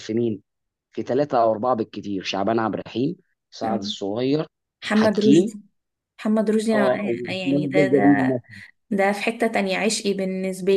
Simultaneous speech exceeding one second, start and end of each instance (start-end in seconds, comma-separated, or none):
6.7-8.4